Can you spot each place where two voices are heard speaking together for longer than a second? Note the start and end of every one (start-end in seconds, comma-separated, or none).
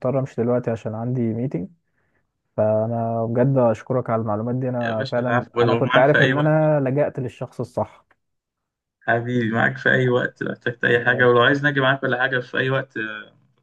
4.8-6.5